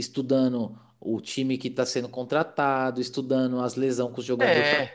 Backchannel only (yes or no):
yes